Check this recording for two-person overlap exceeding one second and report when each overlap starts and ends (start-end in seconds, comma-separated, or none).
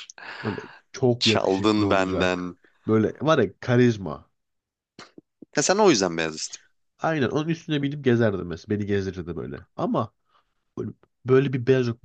1.2-2.6